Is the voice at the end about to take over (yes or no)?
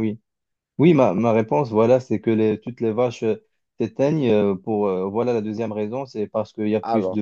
no